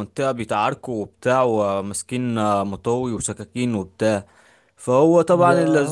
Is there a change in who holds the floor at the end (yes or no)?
no